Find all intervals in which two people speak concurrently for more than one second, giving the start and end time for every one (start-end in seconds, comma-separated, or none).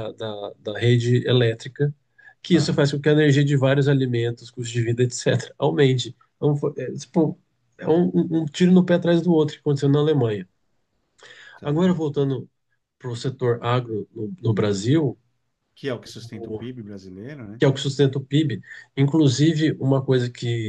none